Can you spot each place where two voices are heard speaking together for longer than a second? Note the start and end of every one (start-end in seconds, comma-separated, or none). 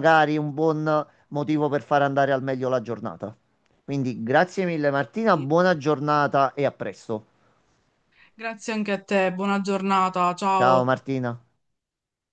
none